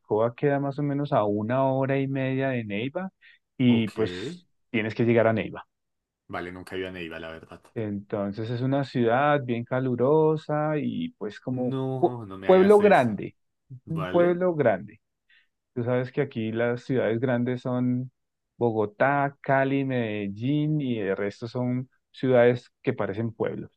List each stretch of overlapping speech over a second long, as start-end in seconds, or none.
11.5-13.2